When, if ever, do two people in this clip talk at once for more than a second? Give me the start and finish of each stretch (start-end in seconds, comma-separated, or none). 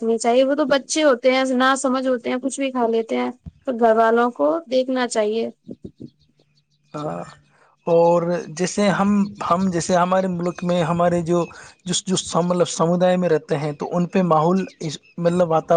none